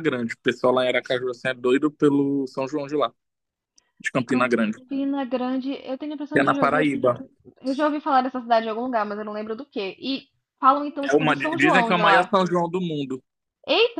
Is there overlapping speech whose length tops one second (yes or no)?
yes